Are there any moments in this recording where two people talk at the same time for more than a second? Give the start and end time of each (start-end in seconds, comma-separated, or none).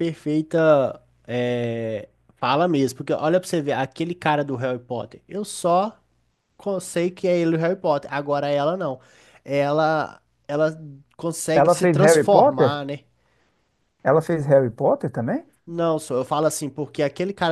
11.5-12.8